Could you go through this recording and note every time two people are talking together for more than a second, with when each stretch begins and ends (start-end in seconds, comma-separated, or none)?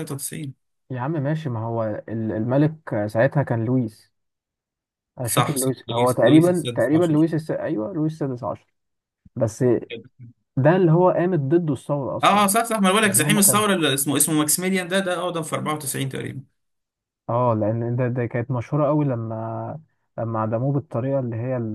5.2-7.2